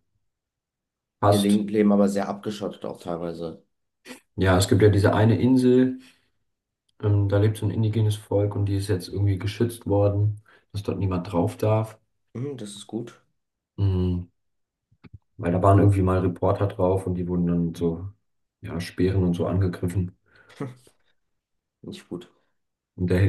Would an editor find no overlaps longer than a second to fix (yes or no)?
yes